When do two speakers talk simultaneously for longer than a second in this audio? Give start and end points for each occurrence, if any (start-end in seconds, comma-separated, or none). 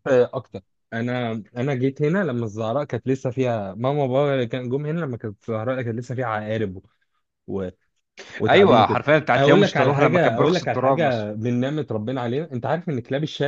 8.5-11.3